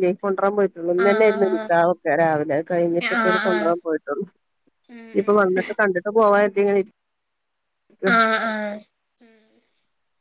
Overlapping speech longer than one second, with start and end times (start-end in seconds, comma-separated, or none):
none